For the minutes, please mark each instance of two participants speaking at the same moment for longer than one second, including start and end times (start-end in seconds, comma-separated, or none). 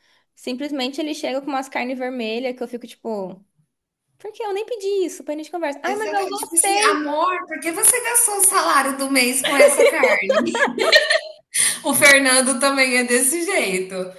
5.8-7.1